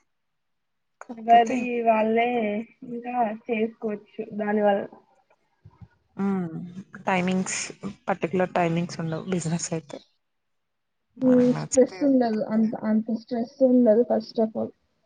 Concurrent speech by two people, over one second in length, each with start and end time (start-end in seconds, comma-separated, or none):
11.3-12.7